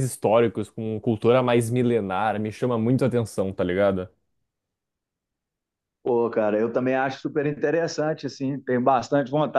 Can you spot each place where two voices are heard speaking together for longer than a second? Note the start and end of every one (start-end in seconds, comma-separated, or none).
none